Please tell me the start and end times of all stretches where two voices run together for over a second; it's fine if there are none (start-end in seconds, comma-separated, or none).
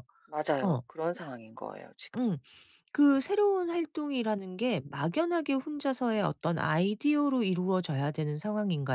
none